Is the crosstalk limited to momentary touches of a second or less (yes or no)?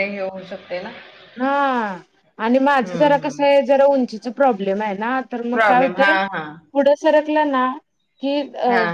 yes